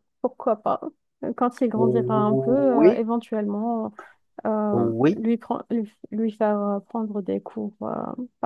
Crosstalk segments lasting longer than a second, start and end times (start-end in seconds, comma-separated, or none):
1.7-3.0